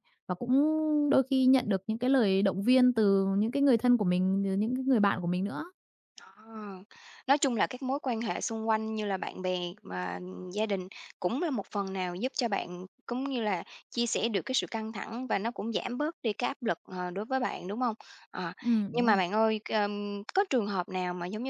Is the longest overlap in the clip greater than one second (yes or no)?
no